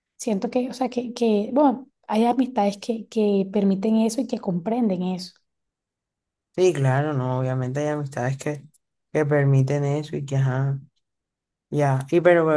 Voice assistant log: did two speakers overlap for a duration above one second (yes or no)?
no